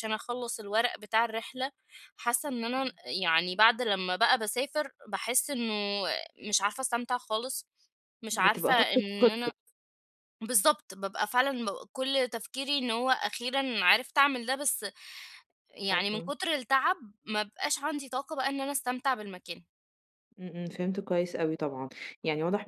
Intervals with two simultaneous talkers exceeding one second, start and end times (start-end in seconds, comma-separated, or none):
8.3-9.5